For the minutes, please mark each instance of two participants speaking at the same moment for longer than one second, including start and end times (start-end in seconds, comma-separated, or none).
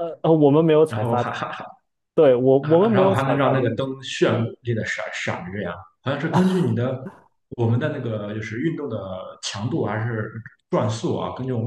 2.6-4.0